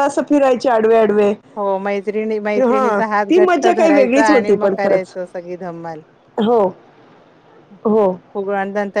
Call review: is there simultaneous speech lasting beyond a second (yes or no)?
yes